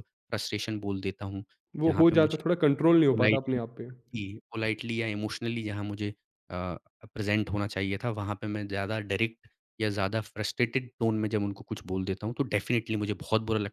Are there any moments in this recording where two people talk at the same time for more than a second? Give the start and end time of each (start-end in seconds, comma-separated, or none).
none